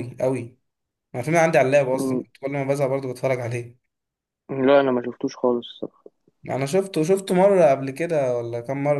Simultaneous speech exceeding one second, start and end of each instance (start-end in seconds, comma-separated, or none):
none